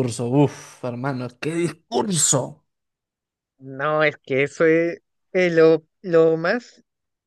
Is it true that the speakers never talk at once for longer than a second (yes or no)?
yes